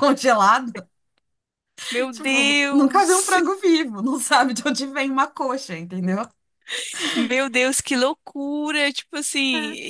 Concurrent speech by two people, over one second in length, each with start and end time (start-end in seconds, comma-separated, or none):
2.1-3.6